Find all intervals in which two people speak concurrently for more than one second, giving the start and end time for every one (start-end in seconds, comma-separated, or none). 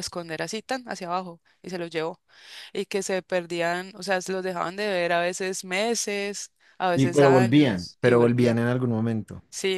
7.0-8.6